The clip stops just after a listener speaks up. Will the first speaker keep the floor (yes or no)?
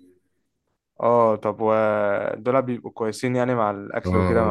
no